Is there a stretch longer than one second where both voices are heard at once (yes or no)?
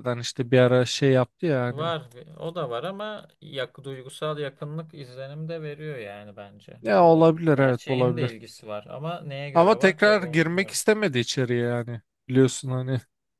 yes